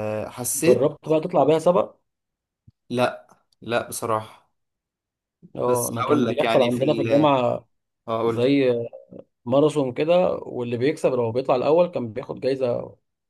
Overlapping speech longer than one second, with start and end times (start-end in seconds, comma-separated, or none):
5.7-7.4